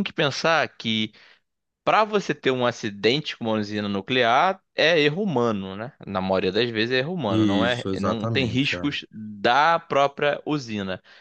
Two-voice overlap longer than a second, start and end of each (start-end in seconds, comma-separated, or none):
7.3-8.9